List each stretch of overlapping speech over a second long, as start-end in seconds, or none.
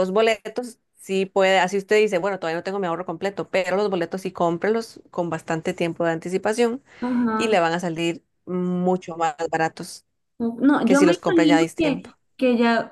10.8-12.1